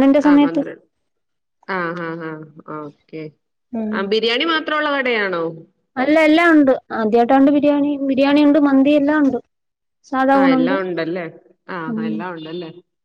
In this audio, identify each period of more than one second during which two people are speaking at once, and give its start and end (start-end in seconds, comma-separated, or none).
none